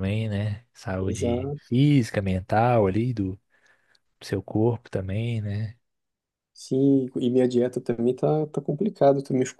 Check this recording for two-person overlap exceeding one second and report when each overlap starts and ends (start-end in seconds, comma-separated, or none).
none